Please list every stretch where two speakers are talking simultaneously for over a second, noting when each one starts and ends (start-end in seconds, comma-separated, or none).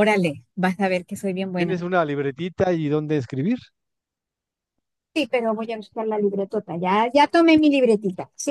none